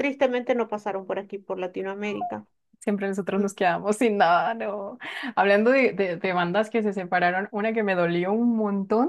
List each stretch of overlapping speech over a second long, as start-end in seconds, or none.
none